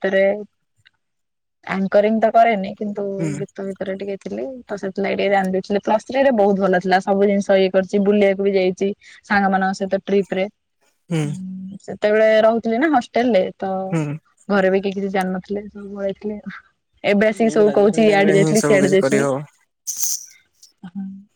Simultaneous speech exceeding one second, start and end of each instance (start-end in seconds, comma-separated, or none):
17.4-19.2